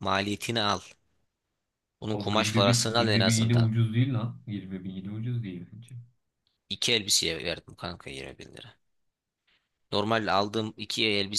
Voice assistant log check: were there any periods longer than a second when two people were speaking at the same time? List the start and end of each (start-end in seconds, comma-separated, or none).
2.1-3.7